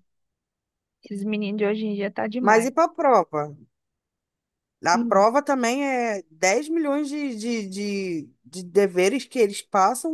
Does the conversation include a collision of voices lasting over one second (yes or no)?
no